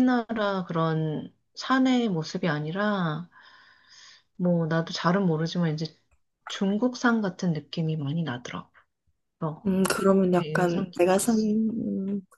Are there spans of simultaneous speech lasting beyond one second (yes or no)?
yes